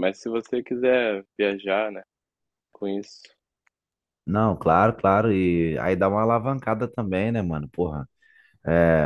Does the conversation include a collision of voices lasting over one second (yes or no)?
no